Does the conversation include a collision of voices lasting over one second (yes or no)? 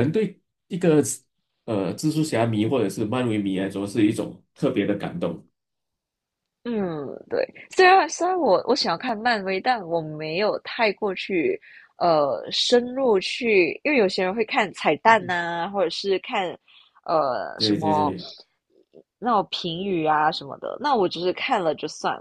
no